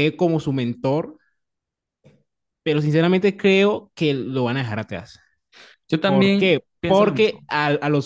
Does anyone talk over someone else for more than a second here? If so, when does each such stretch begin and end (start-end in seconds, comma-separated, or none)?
6.0-7.5